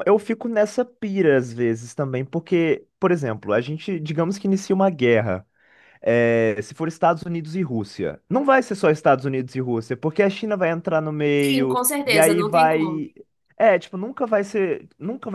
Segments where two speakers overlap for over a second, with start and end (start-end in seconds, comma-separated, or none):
11.4-13.1